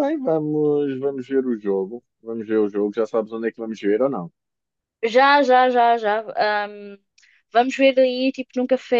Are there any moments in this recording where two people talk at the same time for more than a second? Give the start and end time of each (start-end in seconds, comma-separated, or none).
none